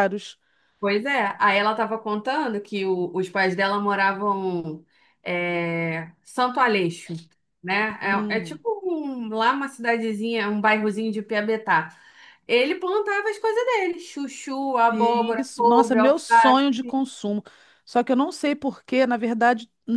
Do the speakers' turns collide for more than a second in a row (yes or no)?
yes